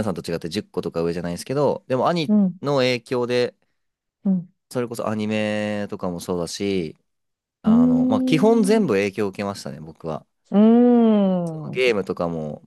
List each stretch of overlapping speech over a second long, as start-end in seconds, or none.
7.6-8.8